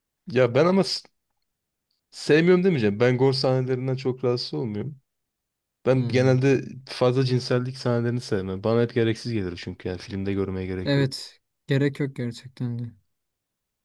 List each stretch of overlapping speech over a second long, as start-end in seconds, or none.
none